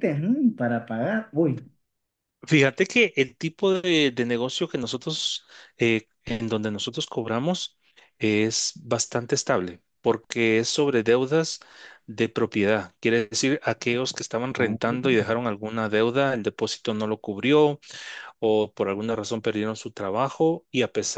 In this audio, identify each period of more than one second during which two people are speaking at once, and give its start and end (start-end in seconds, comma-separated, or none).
none